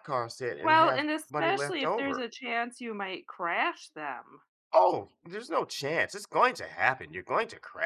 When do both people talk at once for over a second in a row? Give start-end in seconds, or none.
0.6-2.3